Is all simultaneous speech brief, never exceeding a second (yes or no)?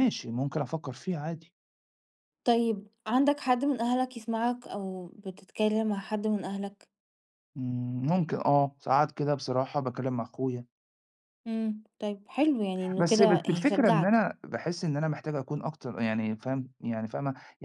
no